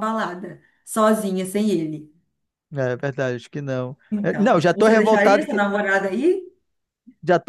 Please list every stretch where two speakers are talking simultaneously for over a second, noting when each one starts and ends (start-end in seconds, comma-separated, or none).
4.1-5.6